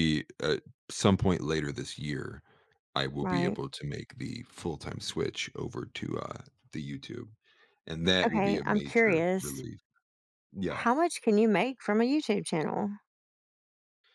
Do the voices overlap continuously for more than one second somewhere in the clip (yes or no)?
yes